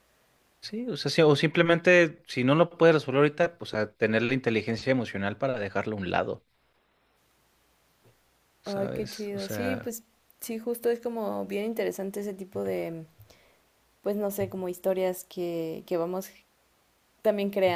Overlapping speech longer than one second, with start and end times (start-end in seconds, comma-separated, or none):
8.7-9.9